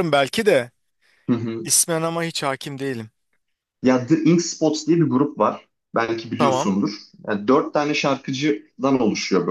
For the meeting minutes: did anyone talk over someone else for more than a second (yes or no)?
no